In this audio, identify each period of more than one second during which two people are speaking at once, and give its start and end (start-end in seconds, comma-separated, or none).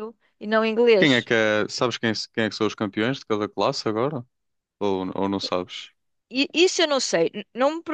none